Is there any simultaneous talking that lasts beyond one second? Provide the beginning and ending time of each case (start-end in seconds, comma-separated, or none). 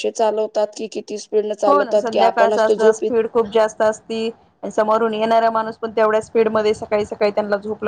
1.7-3.1